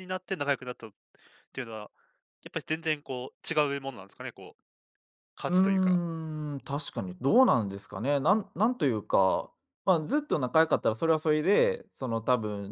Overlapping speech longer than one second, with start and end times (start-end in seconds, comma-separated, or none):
none